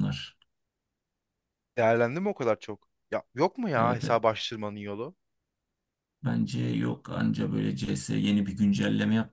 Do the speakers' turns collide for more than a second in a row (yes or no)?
no